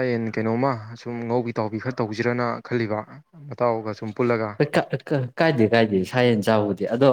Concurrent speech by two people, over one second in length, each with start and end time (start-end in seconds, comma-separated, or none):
none